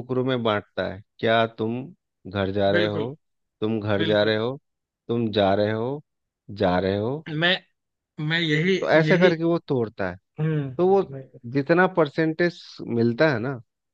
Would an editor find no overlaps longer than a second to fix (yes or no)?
yes